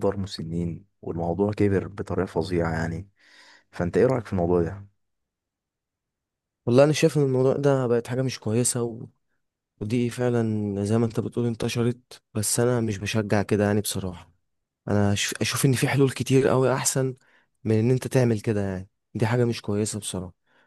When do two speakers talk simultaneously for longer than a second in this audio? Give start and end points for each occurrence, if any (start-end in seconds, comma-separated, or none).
none